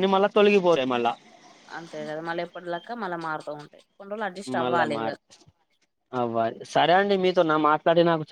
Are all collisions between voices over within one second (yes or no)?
yes